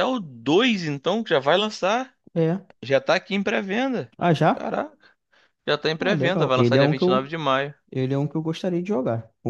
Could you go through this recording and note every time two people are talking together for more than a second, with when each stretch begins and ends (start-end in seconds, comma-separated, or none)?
6.0-7.3